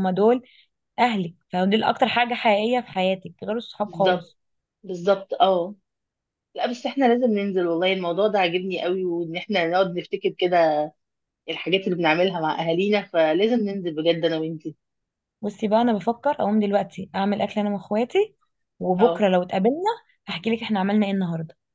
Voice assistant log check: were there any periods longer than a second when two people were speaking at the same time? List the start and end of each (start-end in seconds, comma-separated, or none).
none